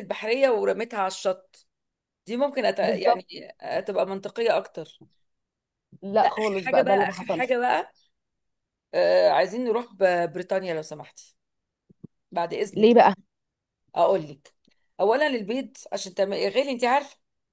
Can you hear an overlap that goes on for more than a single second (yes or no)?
yes